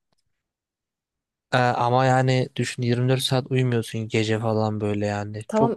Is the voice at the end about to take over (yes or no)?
yes